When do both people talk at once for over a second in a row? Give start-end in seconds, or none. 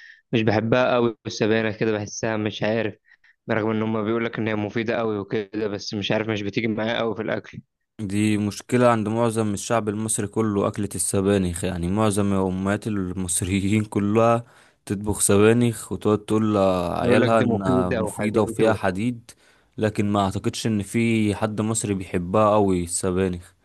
17.0-18.8